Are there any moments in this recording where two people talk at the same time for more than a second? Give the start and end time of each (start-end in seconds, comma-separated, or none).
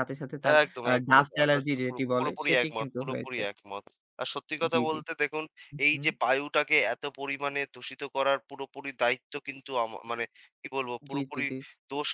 0.6-3.4